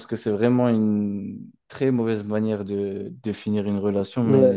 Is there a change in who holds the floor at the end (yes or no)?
yes